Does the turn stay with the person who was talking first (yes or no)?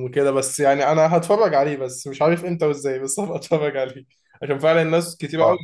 yes